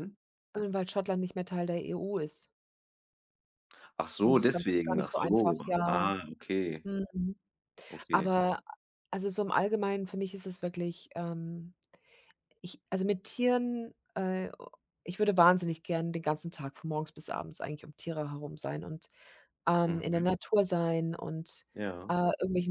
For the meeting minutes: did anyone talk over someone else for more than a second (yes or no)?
yes